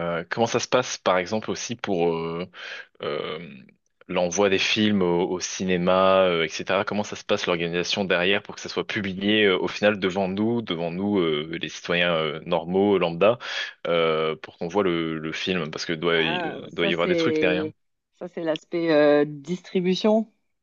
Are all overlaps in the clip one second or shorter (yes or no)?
no